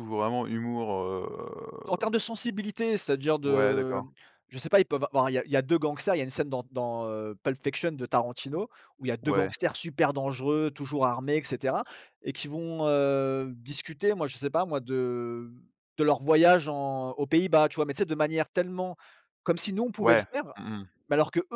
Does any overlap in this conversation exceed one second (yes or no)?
no